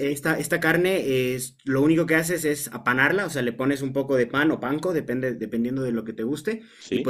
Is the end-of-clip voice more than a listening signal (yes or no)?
no